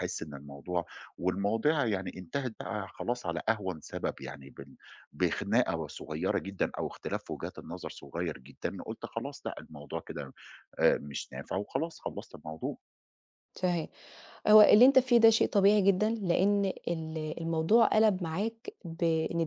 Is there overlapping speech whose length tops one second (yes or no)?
no